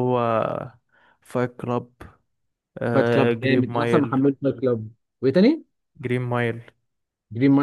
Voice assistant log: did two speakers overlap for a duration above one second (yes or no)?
yes